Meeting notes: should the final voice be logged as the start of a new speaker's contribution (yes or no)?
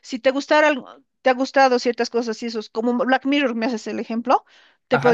no